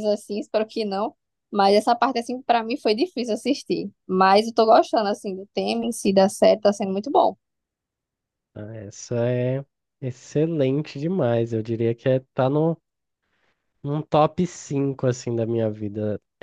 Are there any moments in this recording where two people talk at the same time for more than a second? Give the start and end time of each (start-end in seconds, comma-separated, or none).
none